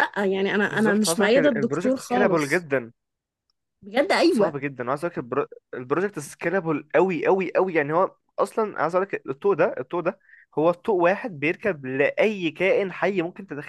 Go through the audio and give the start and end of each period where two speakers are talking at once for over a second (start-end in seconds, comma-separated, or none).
0.7-2.7